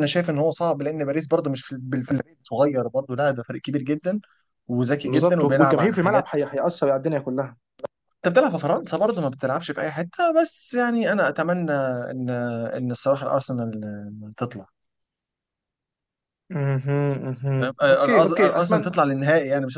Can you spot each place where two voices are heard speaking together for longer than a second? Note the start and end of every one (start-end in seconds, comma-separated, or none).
5.0-6.3, 17.6-19.0